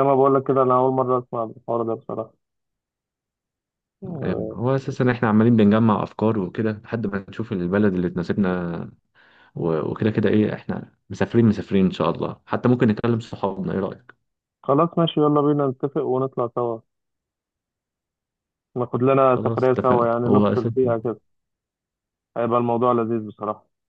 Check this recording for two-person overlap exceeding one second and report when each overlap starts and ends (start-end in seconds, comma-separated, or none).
19.3-20.7